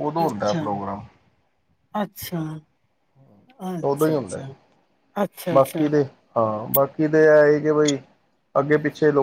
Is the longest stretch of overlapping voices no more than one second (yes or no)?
yes